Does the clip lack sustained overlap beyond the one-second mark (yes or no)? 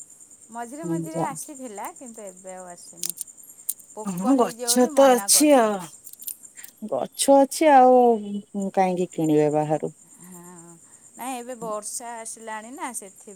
yes